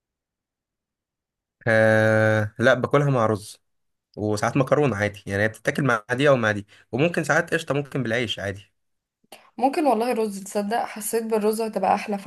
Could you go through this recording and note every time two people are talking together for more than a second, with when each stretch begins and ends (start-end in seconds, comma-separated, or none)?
none